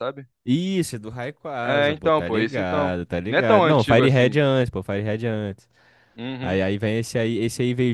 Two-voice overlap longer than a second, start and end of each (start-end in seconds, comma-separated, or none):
1.6-4.4